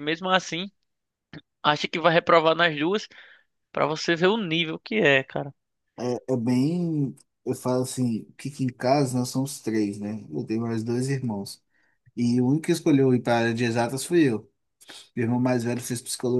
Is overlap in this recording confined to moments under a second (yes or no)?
yes